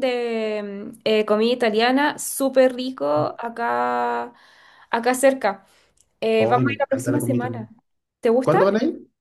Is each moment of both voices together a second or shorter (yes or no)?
no